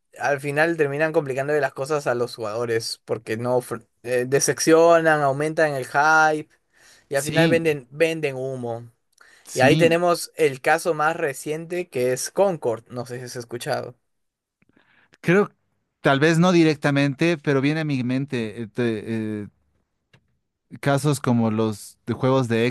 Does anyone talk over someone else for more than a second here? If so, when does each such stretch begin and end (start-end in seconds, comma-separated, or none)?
none